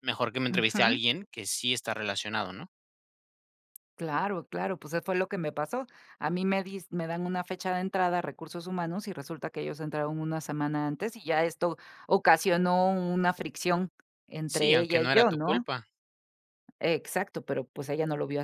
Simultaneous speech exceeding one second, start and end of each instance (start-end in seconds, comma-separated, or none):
14.4-15.7